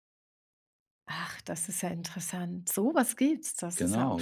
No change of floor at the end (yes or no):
no